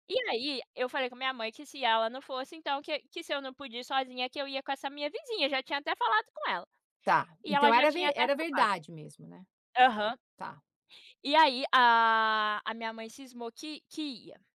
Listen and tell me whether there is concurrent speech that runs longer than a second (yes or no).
yes